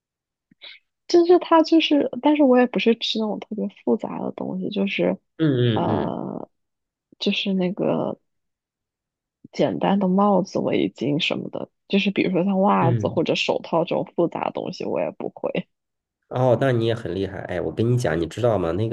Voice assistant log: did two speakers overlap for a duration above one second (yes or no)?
no